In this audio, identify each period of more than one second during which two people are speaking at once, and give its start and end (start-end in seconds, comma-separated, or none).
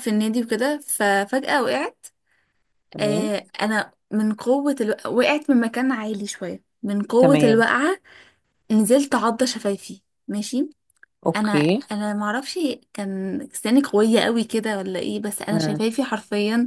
none